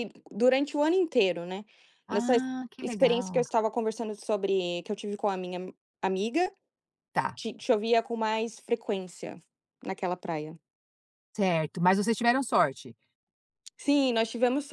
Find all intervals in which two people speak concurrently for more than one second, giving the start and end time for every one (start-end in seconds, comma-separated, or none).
2.1-3.4